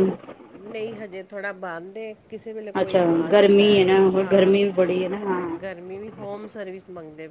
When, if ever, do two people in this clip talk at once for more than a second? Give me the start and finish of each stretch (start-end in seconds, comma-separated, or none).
2.8-4.6